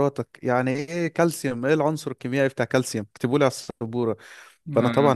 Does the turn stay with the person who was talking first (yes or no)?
yes